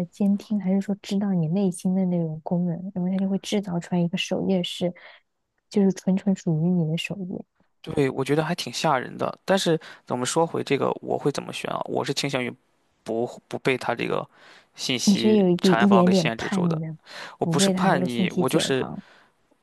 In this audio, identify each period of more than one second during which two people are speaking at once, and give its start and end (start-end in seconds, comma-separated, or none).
15.0-16.8, 17.4-18.8